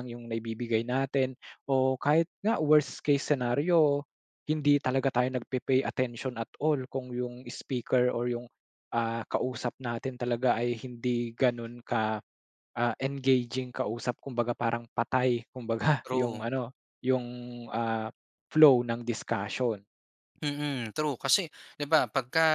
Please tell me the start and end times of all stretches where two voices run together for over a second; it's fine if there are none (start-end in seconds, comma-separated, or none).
none